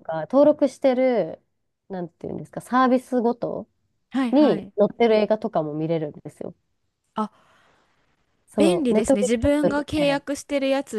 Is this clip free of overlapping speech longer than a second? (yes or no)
no